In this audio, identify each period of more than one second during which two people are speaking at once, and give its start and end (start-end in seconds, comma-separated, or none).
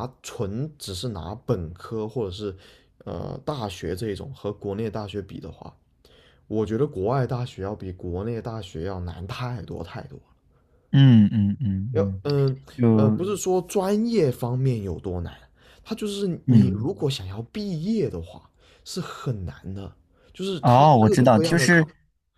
20.6-21.9